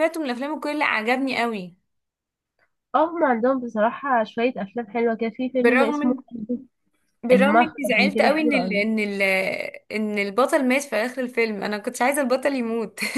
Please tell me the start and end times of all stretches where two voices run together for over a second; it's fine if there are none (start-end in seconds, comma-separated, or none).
7.3-8.8